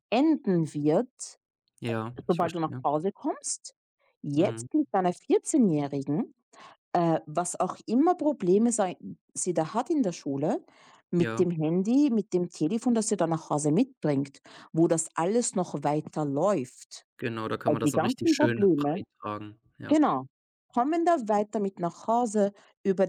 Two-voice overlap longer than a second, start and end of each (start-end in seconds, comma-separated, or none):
17.6-19.0